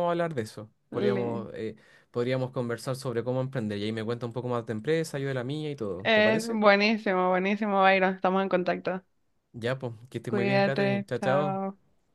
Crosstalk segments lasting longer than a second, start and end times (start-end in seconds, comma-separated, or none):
10.3-11.6